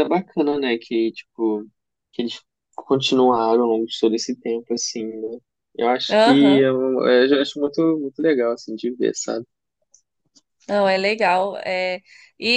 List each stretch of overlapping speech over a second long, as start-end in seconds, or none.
none